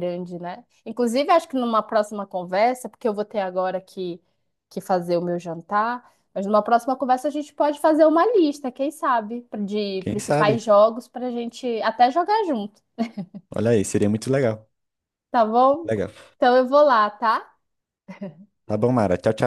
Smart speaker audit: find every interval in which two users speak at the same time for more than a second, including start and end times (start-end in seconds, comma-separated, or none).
none